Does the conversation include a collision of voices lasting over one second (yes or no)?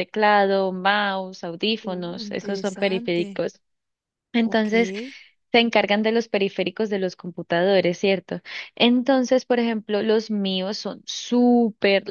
yes